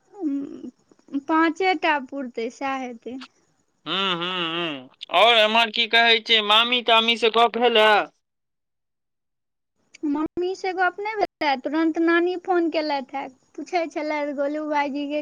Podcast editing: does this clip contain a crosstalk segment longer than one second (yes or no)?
no